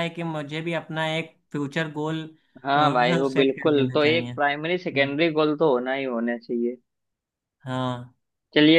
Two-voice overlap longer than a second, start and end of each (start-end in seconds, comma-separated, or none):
3.3-5.2